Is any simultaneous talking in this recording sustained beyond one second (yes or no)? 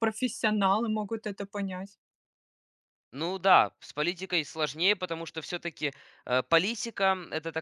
no